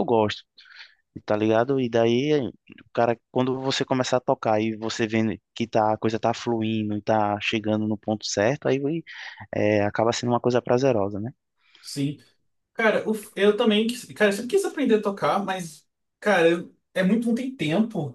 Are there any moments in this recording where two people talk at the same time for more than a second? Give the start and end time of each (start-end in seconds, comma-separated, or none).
none